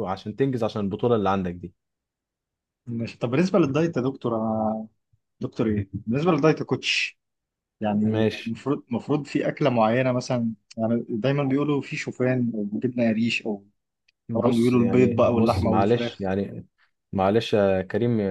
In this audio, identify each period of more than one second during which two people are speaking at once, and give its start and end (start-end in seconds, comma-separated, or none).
14.3-16.3